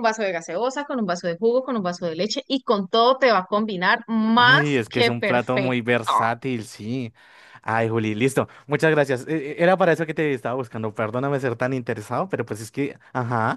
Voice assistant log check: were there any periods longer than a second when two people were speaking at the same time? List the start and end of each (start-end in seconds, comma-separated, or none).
4.3-5.8